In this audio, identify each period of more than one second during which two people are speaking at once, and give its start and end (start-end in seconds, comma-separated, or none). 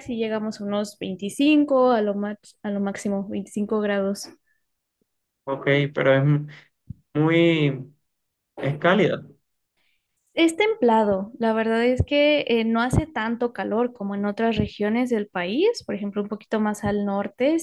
none